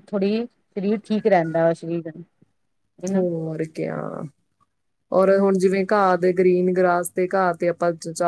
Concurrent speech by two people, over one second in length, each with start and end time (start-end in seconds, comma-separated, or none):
none